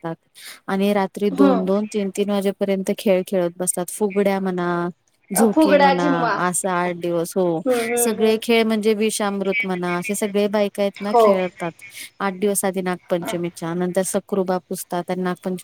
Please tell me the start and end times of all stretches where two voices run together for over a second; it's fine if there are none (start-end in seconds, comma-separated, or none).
none